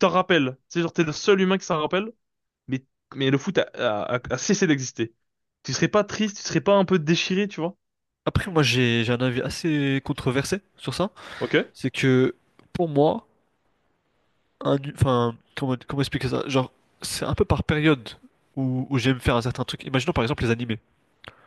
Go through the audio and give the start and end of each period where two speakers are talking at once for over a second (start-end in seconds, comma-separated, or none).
none